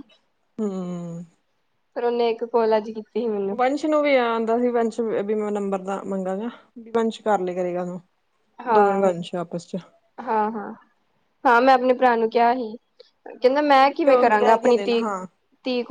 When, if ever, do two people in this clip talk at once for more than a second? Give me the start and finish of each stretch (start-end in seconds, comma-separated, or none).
13.4-15.2